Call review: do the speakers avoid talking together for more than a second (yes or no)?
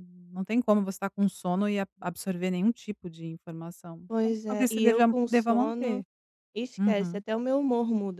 no